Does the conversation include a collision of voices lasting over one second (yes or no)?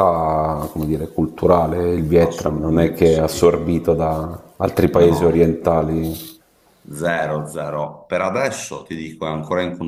yes